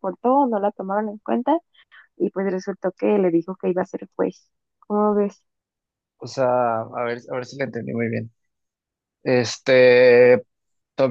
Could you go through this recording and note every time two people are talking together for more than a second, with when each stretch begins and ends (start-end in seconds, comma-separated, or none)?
none